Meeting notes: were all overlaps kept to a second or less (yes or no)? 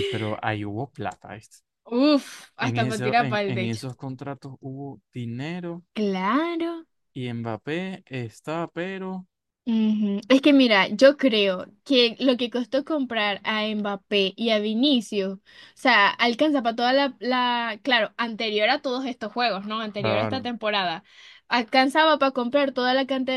no